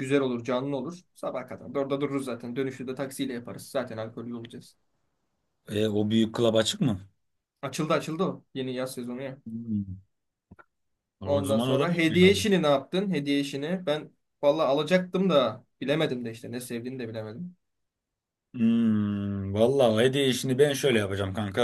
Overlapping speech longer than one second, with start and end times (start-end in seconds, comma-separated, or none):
11.2-12.5